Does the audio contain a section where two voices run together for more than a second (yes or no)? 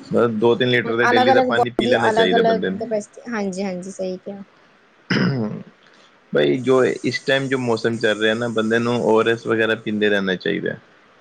yes